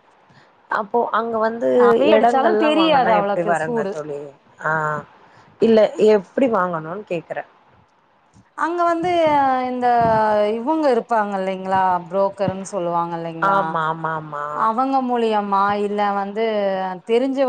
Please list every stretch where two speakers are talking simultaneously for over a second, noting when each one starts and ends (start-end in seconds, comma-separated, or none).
2.1-3.8